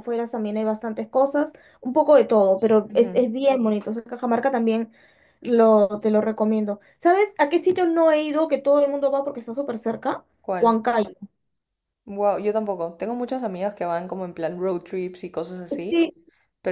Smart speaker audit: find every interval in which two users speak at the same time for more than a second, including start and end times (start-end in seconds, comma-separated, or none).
none